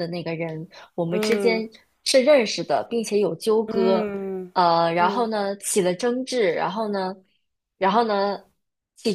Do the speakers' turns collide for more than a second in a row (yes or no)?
no